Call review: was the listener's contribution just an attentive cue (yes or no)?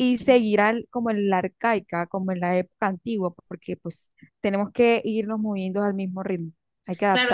no